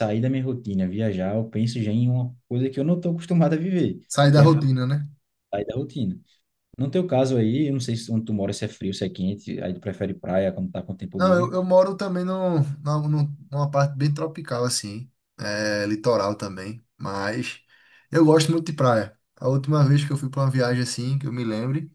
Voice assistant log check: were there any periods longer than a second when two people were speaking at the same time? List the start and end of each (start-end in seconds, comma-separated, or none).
none